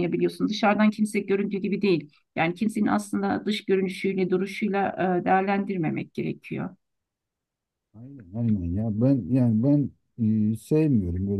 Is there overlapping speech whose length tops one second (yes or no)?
no